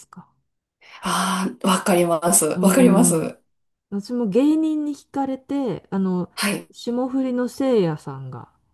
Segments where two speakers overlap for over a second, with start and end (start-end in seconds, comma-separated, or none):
none